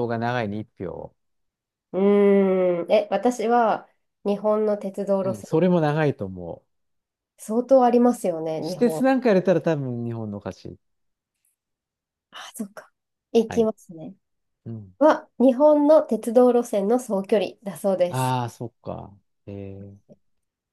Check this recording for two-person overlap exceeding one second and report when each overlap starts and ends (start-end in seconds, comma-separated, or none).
none